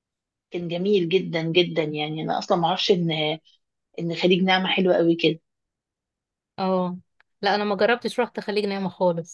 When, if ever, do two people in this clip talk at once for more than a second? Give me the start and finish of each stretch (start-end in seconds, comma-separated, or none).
none